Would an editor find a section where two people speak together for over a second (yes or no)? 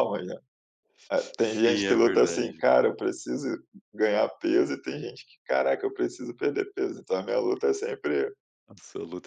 yes